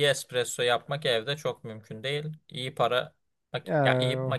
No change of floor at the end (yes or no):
yes